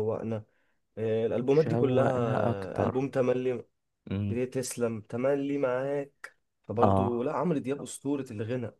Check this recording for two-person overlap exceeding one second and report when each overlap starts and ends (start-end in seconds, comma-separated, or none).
1.5-3.0